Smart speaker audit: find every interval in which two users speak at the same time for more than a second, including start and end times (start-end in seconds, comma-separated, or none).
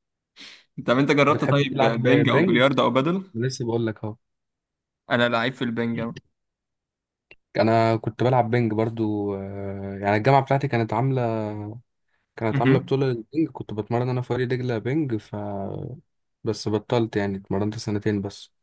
1.3-2.6